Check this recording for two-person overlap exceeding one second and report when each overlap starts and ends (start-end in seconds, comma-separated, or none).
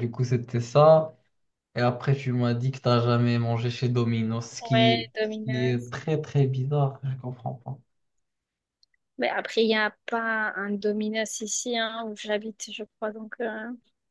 4.6-5.9